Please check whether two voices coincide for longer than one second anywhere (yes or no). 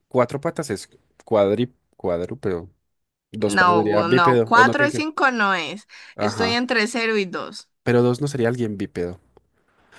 yes